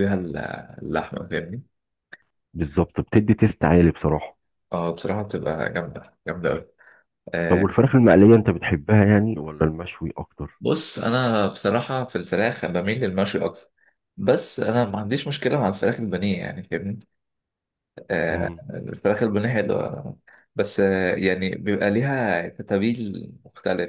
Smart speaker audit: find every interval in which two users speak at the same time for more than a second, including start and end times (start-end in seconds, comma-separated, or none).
none